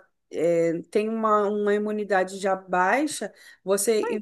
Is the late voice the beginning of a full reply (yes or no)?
no